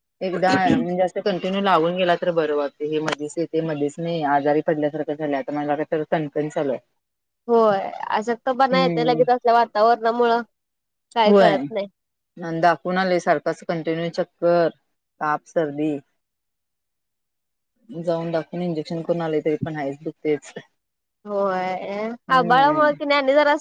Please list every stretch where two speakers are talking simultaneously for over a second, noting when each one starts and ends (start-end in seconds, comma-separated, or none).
none